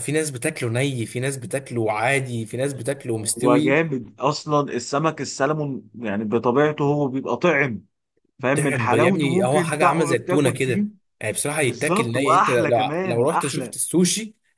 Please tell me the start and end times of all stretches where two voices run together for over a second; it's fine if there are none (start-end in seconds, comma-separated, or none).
8.5-10.8, 11.6-13.8